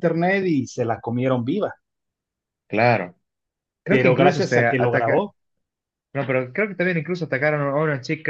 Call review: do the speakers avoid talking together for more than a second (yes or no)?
no